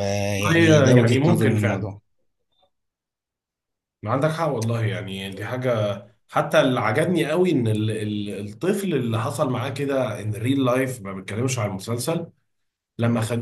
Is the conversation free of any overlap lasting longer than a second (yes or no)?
no